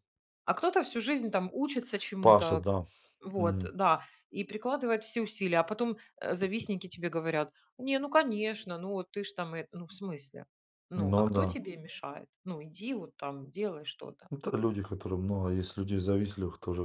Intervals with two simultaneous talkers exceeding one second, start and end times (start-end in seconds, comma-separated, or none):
none